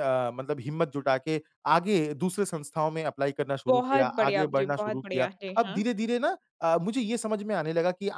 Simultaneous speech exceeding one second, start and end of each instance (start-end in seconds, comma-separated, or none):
3.7-5.8